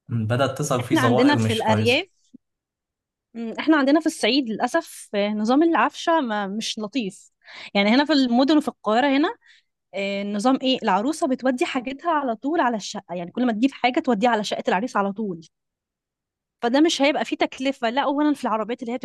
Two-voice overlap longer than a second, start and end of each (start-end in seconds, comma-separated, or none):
0.8-2.0